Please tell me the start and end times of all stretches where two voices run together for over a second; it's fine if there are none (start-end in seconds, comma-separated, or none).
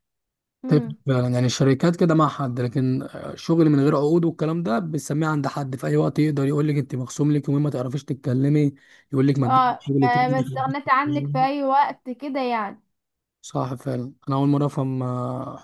9.4-11.5